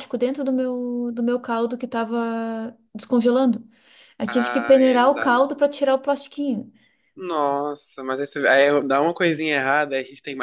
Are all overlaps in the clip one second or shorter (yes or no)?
no